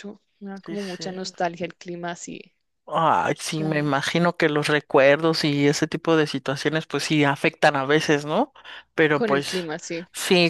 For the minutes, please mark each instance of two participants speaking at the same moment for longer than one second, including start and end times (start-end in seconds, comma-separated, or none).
none